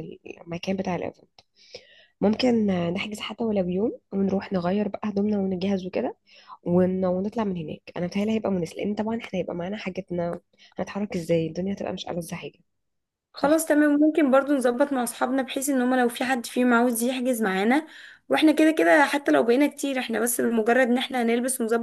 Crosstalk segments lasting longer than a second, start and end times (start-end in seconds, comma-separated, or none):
none